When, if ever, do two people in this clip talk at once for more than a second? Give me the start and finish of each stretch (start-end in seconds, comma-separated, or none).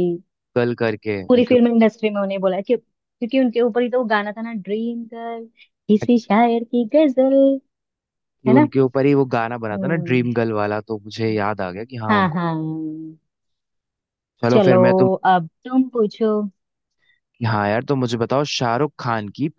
none